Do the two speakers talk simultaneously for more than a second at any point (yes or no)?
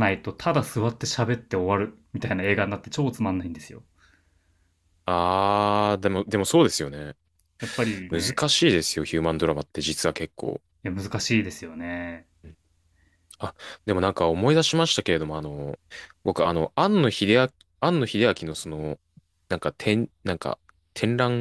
no